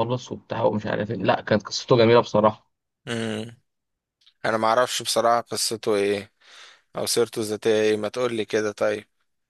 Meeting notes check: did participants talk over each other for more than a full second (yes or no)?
no